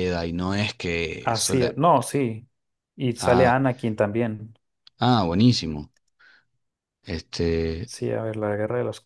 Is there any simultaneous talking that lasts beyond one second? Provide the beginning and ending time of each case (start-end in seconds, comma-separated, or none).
none